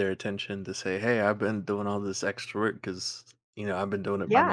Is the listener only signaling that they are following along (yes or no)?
no